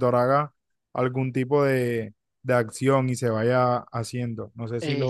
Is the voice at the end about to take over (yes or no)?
yes